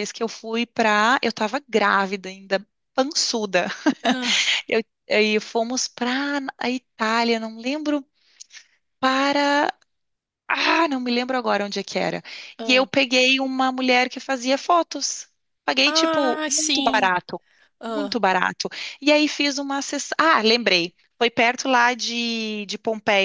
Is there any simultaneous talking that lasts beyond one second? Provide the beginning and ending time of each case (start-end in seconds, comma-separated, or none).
15.8-17.1